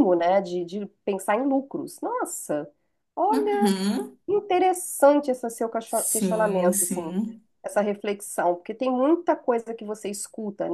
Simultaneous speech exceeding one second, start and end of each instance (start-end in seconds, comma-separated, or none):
5.8-7.1